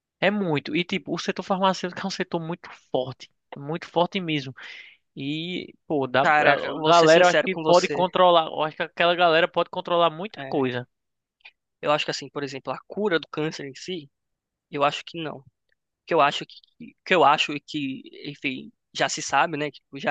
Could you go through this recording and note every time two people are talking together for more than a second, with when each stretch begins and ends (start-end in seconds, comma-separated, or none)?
6.2-8.0